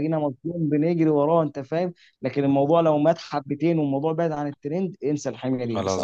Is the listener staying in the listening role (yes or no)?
yes